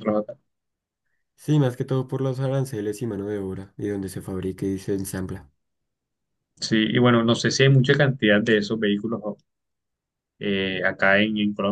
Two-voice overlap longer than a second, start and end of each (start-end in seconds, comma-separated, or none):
none